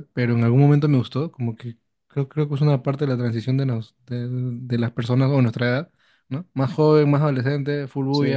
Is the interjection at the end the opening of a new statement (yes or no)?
no